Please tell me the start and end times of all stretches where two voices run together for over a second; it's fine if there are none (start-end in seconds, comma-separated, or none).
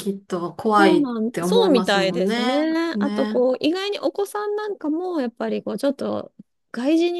0.8-3.4